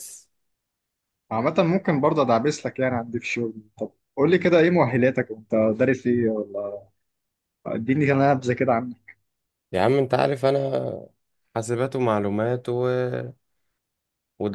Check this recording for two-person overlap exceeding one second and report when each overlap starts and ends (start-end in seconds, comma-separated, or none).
none